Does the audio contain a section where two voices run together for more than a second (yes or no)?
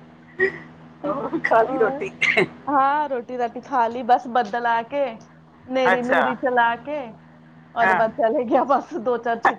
no